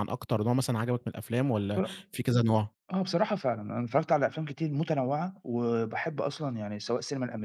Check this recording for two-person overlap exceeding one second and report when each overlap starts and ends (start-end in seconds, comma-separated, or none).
none